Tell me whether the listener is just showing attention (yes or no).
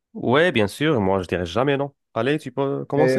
no